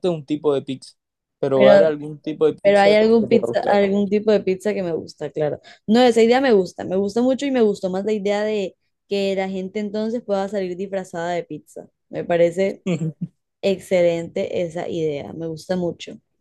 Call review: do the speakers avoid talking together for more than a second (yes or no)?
no